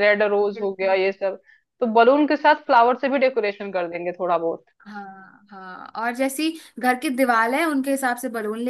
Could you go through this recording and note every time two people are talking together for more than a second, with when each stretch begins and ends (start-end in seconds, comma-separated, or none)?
none